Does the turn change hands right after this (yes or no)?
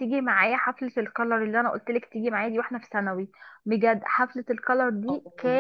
no